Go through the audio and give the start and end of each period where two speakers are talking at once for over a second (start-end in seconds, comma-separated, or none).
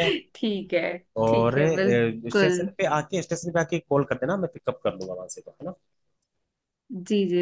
1.2-2.7